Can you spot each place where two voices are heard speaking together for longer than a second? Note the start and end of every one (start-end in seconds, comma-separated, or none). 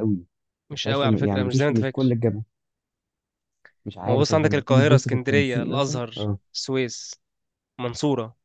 0.7-2.1, 4.0-6.1